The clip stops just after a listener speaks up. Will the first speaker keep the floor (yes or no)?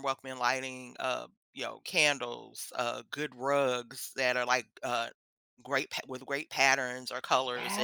no